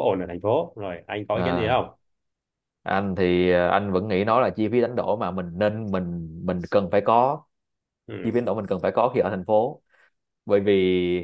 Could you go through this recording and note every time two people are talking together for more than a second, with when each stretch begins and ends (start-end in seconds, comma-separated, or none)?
none